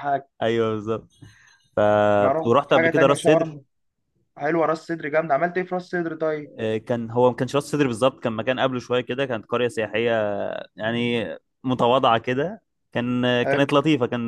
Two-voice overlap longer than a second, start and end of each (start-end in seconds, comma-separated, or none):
2.2-3.6